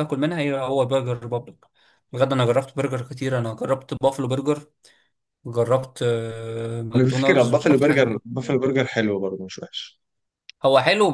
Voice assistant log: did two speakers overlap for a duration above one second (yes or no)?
yes